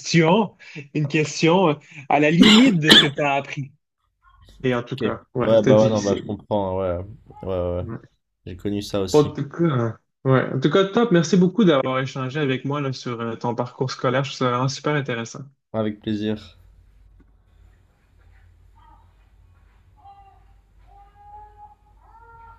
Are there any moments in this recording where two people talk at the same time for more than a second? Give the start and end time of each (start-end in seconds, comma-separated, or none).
4.9-6.2